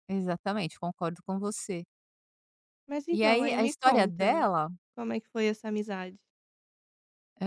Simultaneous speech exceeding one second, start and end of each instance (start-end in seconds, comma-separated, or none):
3.1-4.5